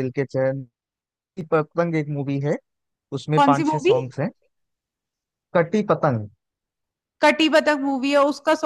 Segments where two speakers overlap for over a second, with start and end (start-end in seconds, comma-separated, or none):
none